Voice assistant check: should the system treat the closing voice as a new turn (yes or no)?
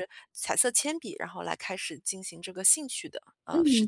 yes